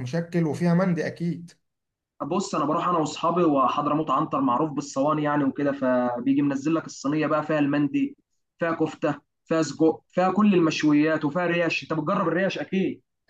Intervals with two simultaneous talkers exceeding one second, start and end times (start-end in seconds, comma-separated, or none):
none